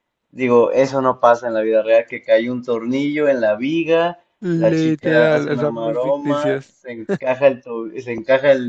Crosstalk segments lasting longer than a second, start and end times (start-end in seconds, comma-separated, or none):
4.5-6.7